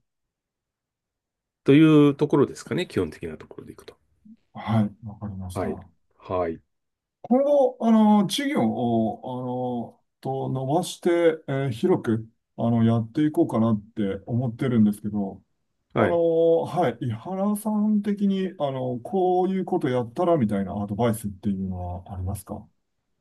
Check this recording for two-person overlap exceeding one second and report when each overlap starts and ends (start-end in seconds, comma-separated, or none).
none